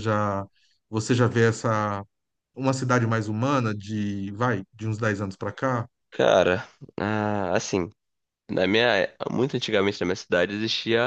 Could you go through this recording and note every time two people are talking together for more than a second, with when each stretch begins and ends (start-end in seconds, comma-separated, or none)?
none